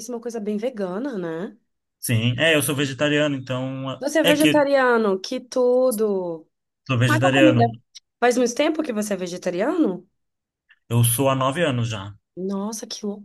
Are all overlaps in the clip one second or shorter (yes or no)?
yes